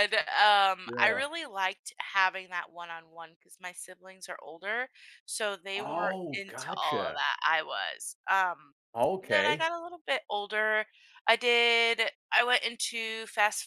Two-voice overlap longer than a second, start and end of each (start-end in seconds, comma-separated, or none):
5.7-7.2